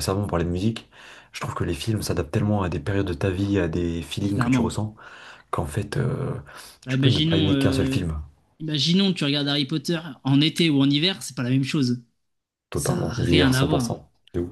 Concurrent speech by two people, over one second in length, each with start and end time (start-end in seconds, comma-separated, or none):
6.9-8.1, 12.7-14.0